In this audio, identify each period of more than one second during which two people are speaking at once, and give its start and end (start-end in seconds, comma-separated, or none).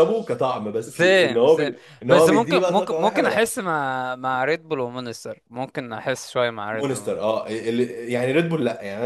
0.9-3.5